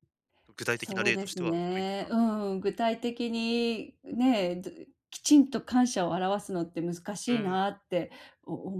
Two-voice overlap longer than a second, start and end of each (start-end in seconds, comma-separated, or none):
0.7-2.2